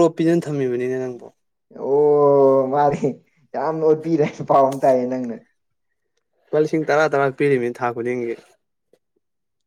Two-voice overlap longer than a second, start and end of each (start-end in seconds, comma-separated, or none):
none